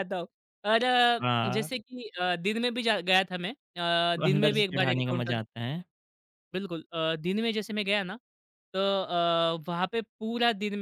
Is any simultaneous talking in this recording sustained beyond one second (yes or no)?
yes